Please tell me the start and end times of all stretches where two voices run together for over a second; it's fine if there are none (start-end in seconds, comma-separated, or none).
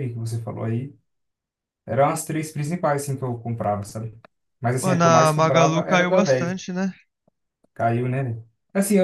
4.8-6.6